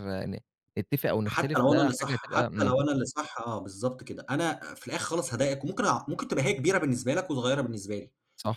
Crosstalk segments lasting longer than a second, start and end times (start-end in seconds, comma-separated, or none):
1.3-2.8